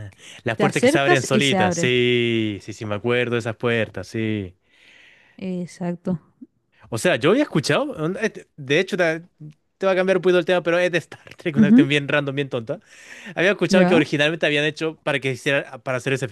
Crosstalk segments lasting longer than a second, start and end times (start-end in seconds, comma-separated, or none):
0.5-1.9